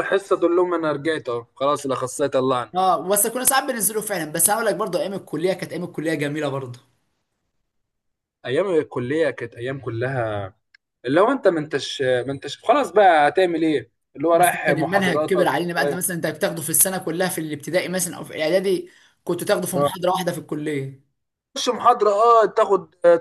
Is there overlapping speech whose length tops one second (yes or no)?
yes